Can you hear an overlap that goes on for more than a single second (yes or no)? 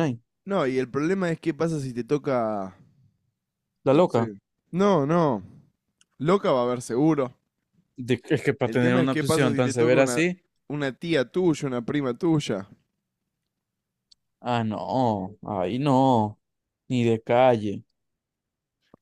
yes